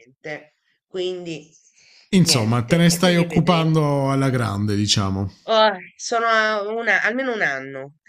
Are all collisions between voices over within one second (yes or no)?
no